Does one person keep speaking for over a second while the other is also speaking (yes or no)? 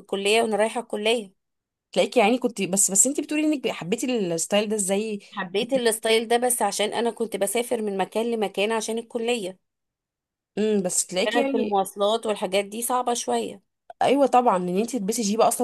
no